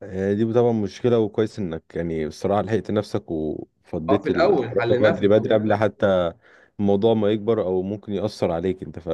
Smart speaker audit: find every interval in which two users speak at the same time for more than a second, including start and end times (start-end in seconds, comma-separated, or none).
4.1-5.9